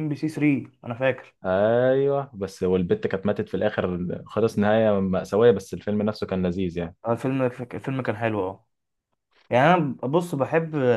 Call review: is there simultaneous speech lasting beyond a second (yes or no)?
no